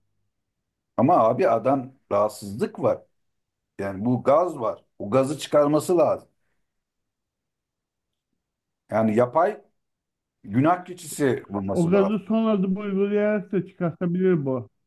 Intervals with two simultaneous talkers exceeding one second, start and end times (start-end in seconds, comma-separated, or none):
none